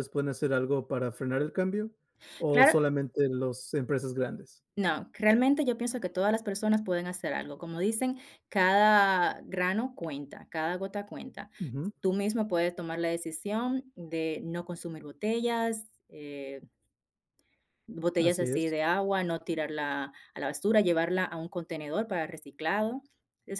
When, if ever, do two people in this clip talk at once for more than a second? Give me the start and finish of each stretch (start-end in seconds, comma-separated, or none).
none